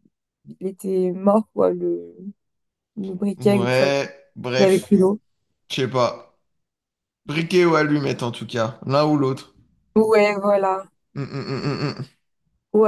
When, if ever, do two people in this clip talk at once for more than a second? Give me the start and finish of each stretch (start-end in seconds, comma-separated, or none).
3.4-5.0